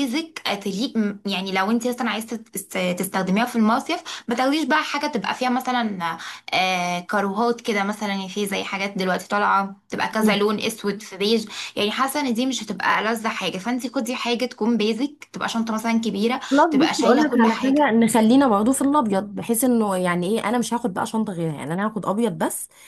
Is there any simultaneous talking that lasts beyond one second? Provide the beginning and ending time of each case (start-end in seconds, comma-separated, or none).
16.5-17.9